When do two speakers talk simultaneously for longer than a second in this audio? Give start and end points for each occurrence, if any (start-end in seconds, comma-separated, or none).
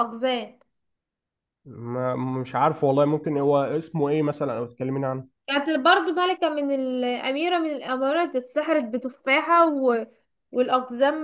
none